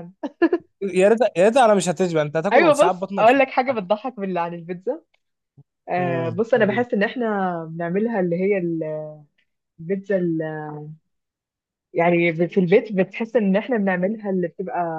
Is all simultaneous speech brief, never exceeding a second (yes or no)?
no